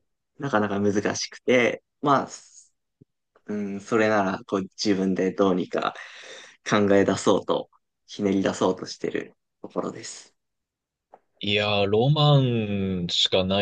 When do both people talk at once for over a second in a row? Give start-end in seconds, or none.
none